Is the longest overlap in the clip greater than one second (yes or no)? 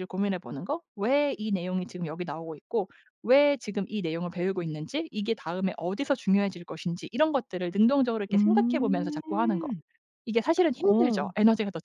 yes